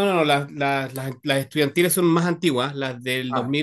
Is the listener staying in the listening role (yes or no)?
yes